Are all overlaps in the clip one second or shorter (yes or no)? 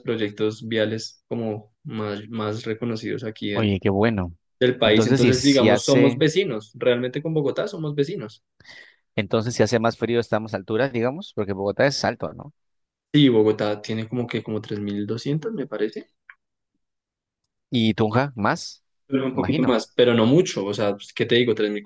no